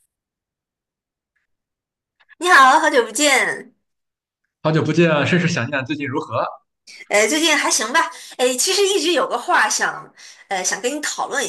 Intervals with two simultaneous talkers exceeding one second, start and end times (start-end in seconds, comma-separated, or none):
none